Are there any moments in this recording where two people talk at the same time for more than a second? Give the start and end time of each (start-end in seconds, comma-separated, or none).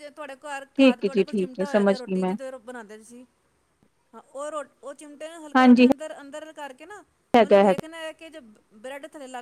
0.8-2.3